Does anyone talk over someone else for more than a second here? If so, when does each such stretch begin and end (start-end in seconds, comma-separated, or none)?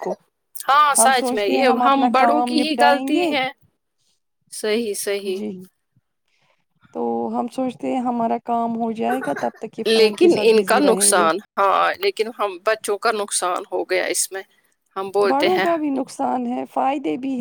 1.0-3.3, 9.8-11.3